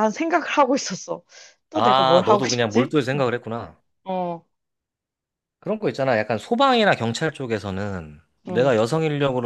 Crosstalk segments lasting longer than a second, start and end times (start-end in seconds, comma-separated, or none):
1.7-3.2